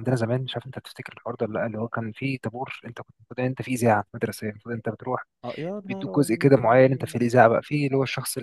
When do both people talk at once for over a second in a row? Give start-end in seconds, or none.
5.9-7.2